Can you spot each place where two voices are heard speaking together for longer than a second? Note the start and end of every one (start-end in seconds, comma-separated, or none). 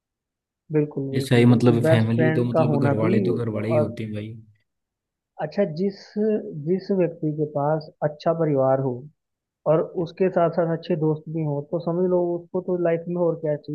1.2-4.0